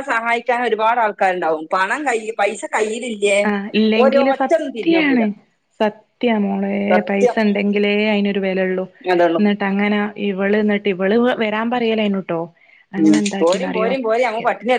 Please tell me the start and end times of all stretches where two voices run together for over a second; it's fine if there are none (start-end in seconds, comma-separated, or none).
4.0-5.2